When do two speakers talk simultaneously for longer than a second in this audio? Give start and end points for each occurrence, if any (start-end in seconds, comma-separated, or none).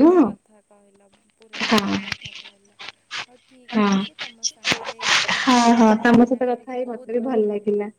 5.4-7.2